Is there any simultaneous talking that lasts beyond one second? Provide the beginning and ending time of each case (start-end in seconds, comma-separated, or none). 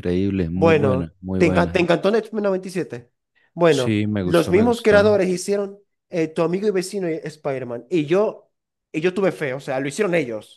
0.5-1.9, 3.7-5.2